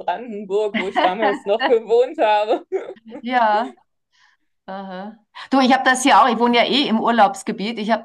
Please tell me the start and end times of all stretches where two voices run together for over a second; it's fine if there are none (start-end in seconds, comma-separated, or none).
none